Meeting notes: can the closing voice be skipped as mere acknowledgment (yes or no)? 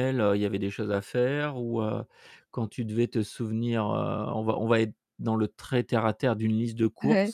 no